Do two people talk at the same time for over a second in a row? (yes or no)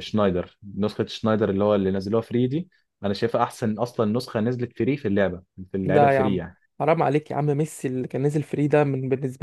no